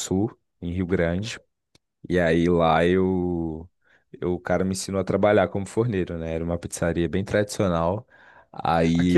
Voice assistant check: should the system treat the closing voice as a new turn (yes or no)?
yes